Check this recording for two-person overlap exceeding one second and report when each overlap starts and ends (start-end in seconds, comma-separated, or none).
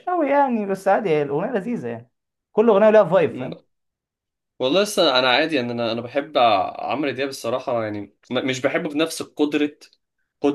none